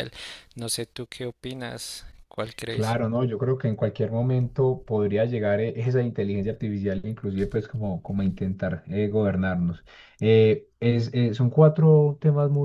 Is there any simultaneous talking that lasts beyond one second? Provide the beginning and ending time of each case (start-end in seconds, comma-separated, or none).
none